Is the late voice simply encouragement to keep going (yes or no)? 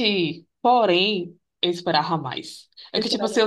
yes